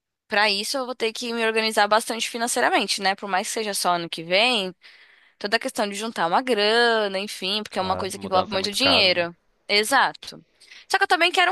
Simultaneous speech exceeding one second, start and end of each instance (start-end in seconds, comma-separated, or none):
7.7-9.3